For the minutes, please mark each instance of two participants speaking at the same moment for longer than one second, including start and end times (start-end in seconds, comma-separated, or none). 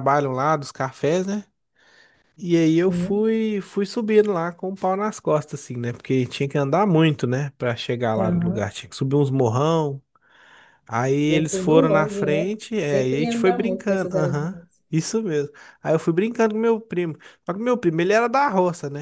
11.3-14.6